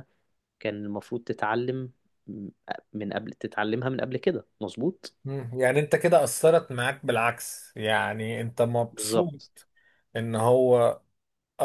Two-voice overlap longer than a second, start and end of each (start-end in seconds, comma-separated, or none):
none